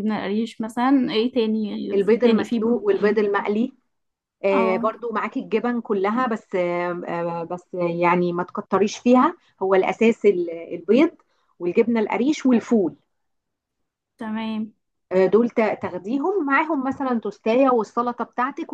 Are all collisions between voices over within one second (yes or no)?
no